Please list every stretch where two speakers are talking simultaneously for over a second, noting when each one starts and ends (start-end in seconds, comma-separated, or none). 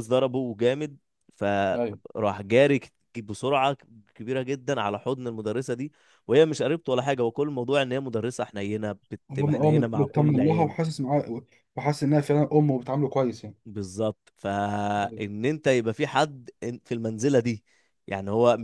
9.3-10.7